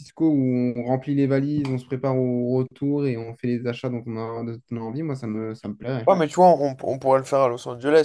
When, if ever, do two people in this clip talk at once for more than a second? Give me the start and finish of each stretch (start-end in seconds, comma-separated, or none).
none